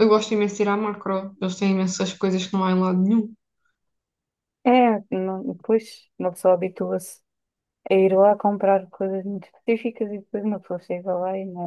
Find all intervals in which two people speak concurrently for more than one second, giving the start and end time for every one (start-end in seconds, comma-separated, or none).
none